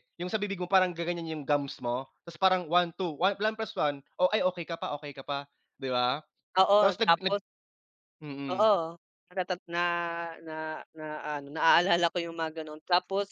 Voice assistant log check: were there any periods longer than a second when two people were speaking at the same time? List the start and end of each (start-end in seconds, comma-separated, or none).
none